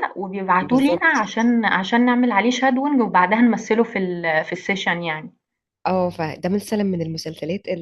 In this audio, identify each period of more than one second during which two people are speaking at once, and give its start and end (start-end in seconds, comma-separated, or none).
none